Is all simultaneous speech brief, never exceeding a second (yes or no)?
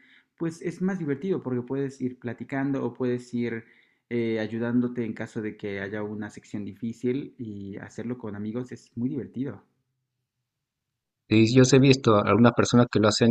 yes